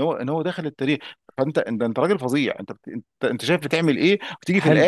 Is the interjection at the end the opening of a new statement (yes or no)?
no